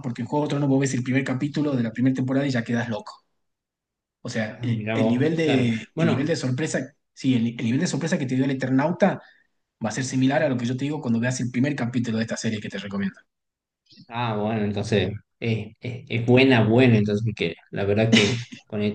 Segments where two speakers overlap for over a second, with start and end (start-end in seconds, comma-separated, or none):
4.5-6.3